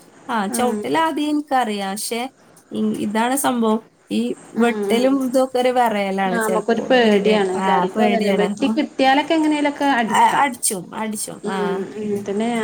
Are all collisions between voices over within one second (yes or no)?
no